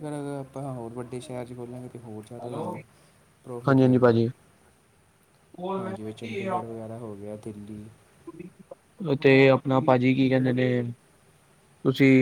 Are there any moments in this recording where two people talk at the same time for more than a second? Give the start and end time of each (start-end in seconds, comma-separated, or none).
none